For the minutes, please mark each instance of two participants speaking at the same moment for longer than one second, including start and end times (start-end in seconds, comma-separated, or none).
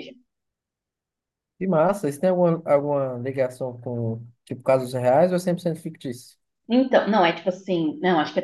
none